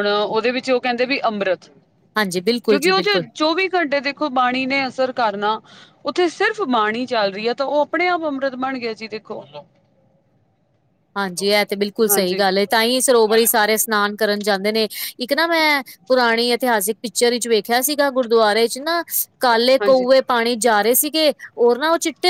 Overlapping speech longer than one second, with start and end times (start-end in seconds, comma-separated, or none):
none